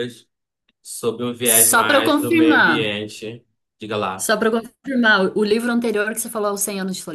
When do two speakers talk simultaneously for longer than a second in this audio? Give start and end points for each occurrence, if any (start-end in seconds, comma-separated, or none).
1.4-2.9